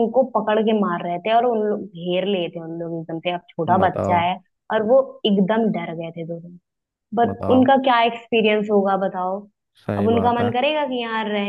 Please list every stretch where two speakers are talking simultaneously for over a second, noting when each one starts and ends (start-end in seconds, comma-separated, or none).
none